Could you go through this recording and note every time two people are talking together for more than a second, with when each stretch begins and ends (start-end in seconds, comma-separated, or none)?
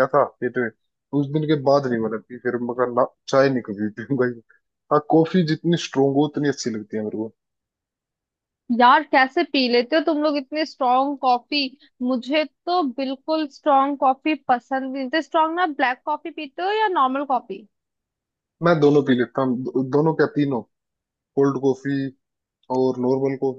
none